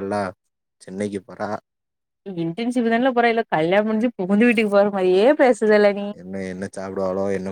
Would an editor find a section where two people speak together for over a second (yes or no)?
no